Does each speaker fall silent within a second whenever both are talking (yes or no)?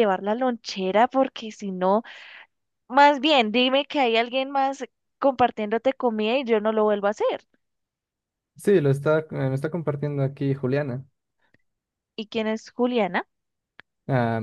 yes